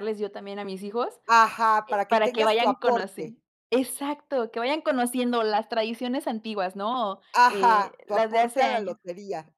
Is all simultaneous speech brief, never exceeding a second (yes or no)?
no